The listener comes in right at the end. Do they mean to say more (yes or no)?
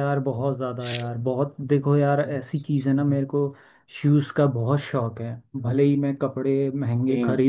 no